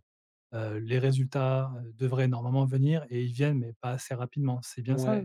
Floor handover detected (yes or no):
yes